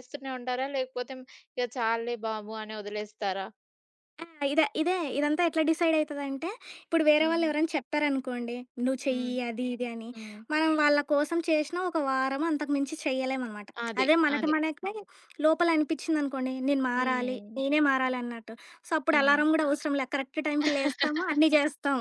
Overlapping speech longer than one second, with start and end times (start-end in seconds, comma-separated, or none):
none